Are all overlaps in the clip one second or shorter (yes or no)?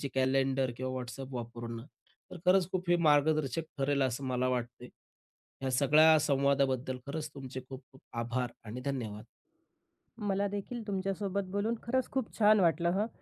yes